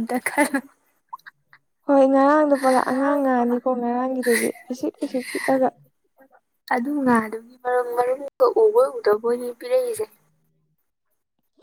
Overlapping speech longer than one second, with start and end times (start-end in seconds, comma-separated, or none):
none